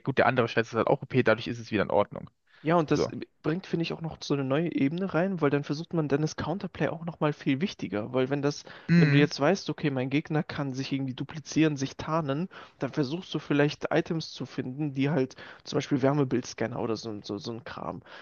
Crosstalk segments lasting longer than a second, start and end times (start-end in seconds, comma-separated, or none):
none